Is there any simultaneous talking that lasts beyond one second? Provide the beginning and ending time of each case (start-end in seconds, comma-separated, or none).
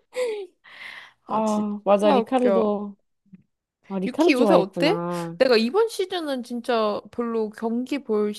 1.3-2.8, 4.0-5.4